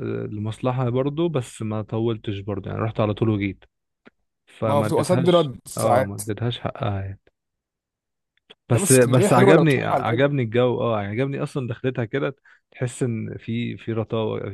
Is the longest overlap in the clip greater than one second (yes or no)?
yes